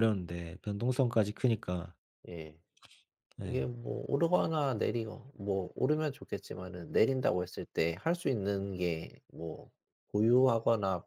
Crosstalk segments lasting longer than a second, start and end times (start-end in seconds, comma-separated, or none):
none